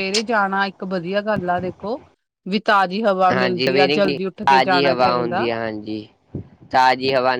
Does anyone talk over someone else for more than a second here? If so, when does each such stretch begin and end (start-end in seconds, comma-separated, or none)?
3.3-5.5